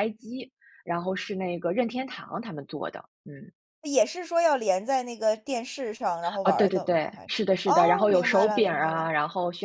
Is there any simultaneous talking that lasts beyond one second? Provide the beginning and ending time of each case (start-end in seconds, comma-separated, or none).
6.4-9.1